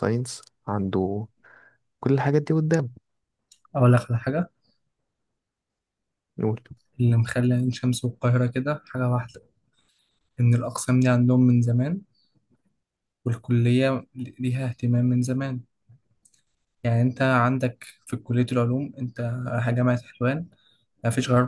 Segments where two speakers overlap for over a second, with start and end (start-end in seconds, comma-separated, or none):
none